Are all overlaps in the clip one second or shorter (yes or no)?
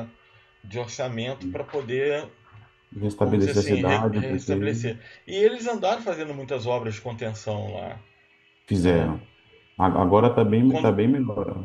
no